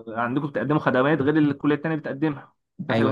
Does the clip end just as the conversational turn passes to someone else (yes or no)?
no